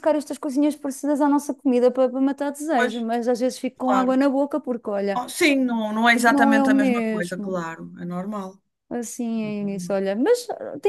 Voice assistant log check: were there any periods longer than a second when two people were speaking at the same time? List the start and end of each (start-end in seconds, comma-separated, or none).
6.3-7.6